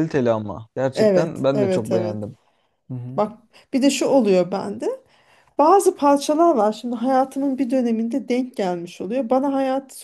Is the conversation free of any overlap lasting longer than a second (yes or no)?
no